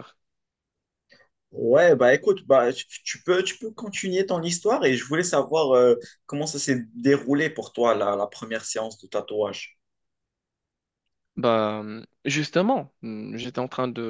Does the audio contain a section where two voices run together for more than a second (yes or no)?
no